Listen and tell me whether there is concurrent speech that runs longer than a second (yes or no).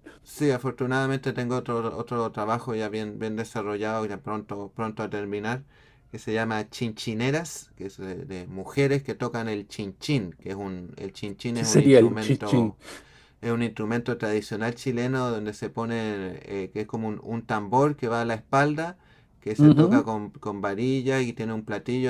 yes